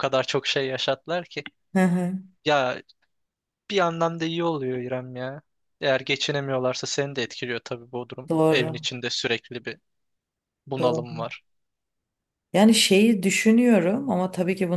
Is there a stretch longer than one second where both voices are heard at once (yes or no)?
no